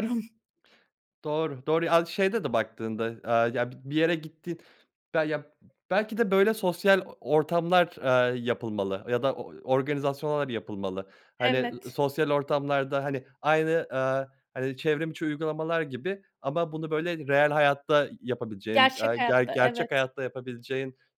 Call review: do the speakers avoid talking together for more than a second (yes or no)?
no